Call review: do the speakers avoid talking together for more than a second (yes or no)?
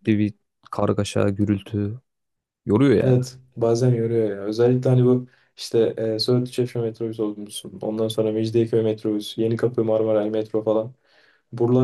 yes